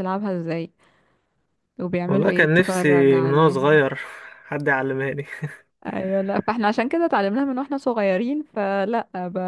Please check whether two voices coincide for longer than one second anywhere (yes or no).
yes